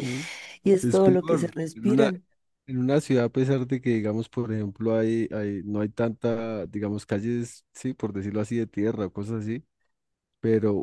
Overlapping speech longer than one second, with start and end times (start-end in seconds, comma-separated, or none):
0.8-2.1